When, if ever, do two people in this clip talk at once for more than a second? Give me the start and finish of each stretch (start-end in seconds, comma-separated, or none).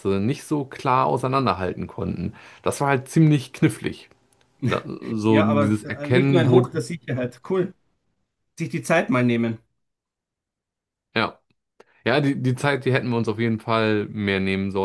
5.3-6.6